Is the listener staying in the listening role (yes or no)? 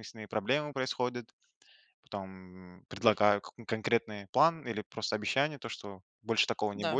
yes